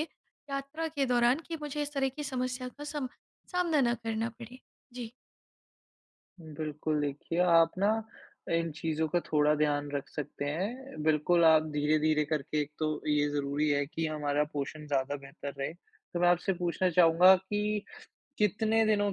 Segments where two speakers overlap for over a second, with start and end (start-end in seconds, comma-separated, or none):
none